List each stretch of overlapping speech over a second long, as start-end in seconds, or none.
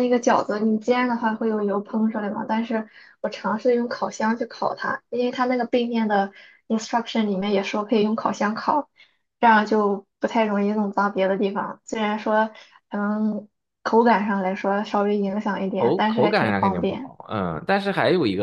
15.8-17.1